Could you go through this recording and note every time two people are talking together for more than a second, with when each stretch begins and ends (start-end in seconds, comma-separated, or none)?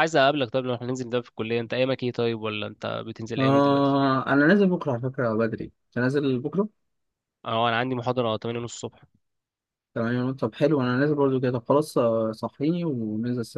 none